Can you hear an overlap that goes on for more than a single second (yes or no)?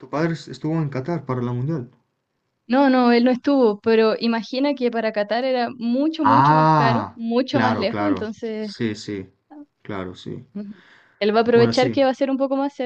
yes